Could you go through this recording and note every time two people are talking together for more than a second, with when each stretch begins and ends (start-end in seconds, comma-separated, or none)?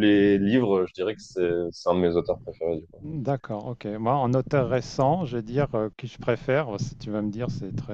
none